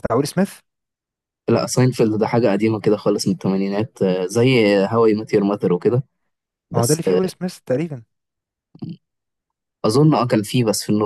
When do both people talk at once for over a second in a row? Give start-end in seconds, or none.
none